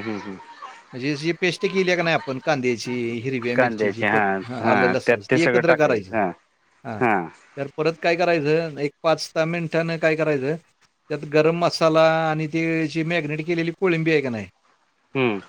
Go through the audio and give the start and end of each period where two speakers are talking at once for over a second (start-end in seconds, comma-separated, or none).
3.5-6.1